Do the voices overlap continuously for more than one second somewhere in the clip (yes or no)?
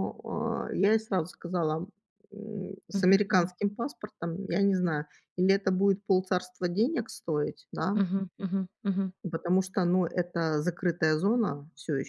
no